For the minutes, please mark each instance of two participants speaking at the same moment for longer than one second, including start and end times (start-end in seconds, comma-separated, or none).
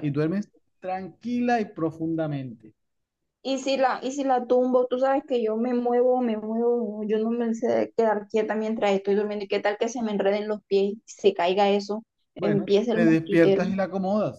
12.4-13.6